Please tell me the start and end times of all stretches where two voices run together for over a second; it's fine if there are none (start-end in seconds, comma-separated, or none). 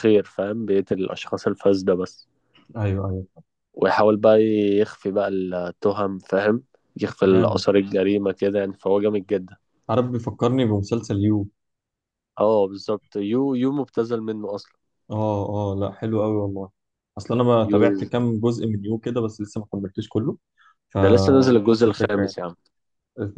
21.0-22.4